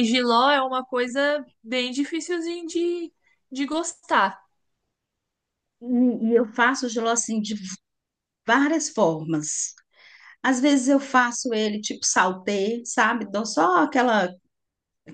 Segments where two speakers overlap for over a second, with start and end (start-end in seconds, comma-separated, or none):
none